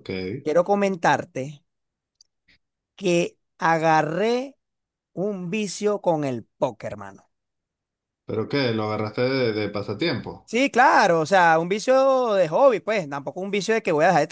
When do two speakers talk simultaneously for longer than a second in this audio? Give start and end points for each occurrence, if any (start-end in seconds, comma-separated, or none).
none